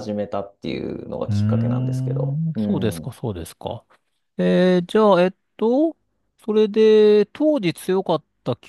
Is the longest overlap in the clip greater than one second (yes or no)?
yes